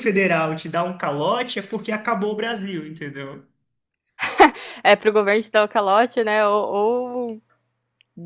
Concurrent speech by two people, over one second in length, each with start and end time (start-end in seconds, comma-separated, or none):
none